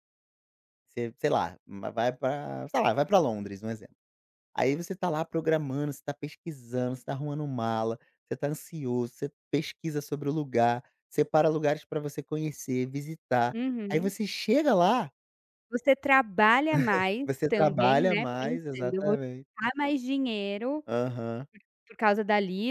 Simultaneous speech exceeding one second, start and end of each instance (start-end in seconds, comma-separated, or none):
17.2-19.5